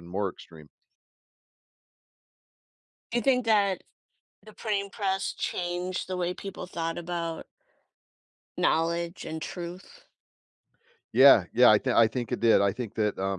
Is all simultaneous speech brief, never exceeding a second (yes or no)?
yes